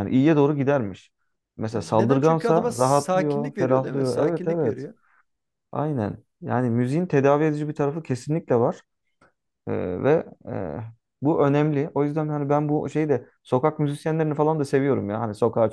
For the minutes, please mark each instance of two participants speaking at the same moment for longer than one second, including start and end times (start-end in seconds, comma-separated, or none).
1.7-4.8